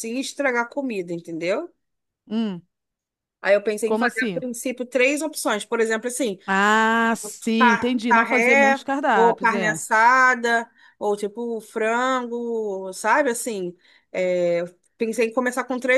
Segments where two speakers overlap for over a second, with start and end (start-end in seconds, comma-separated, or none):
7.6-9.8